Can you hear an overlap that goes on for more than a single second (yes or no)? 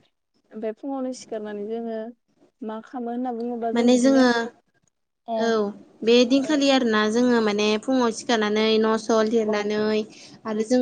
no